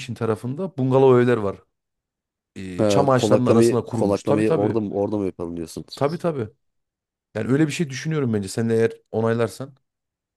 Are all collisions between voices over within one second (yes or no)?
no